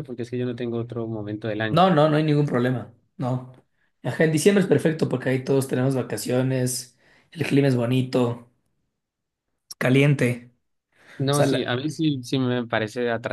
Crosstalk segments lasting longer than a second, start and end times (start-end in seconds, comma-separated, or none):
none